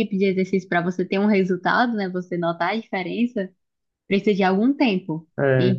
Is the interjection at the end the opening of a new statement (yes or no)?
no